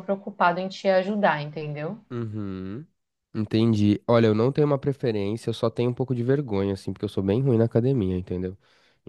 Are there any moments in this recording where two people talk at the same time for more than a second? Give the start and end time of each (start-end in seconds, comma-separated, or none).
none